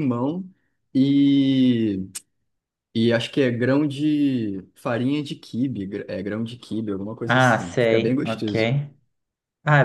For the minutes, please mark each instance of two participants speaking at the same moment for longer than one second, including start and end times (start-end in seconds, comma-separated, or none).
7.2-8.5